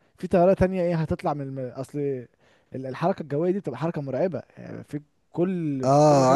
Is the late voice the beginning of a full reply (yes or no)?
yes